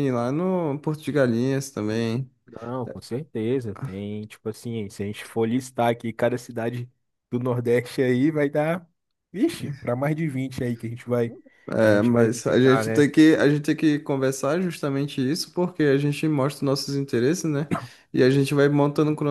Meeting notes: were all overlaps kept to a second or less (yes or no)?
no